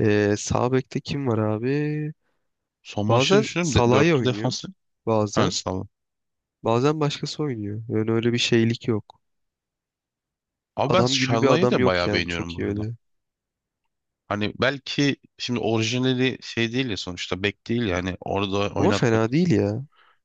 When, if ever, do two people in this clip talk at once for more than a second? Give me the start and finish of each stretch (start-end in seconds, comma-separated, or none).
3.1-4.5, 10.8-12.9